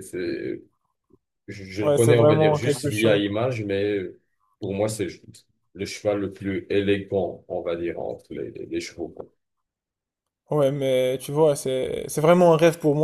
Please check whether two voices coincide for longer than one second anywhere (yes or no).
yes